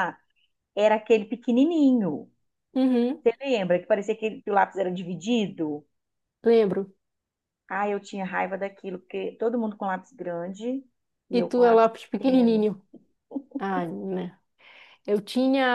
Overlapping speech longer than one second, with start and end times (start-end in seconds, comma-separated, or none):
11.3-12.7